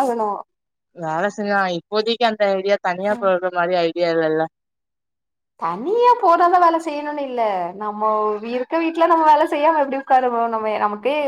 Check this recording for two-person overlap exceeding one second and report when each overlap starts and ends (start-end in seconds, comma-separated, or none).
none